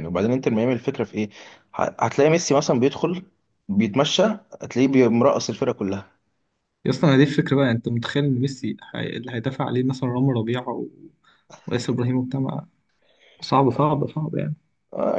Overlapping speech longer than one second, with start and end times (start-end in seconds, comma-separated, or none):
none